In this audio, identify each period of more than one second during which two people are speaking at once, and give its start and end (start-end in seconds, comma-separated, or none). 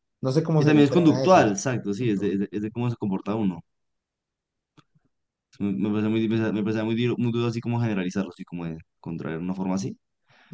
0.6-2.4